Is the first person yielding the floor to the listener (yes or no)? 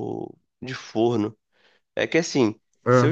no